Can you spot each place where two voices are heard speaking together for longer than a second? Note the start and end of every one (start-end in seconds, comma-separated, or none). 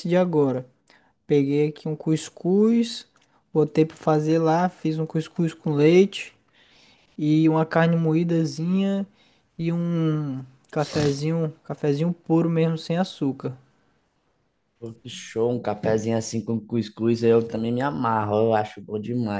none